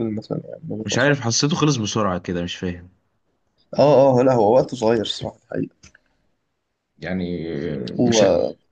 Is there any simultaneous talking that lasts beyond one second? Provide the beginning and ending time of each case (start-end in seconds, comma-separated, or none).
none